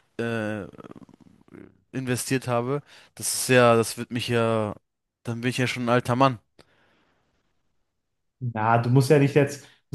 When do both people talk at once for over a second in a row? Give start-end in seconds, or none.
none